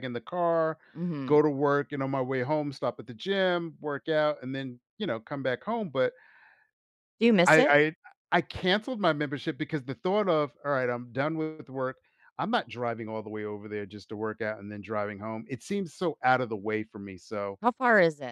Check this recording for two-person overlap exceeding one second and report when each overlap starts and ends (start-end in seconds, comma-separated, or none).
none